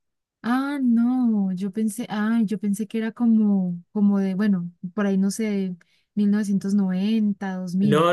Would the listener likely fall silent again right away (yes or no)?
no